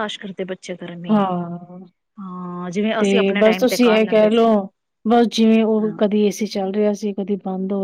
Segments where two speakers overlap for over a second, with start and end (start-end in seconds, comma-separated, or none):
3.0-4.5